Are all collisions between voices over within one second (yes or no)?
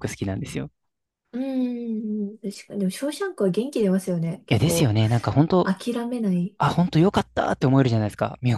yes